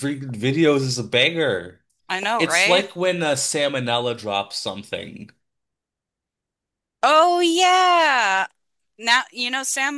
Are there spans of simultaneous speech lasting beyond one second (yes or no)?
no